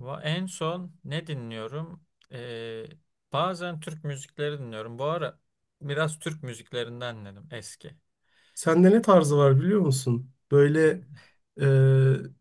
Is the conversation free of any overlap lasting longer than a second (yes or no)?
yes